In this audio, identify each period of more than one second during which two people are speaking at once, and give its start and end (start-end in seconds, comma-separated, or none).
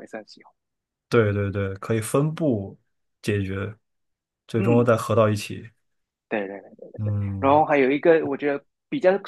none